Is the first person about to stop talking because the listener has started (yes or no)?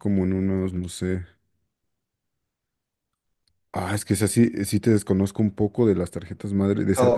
yes